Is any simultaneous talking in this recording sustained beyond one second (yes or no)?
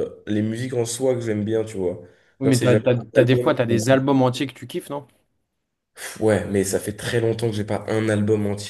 yes